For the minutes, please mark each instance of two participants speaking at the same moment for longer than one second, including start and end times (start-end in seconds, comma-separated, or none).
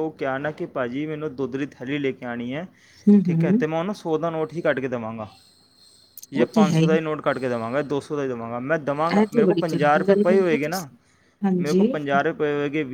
9.2-10.9